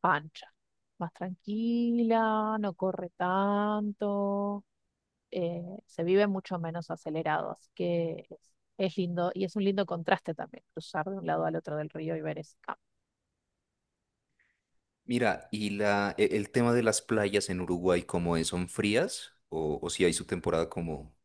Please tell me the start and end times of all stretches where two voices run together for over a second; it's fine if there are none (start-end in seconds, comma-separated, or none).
none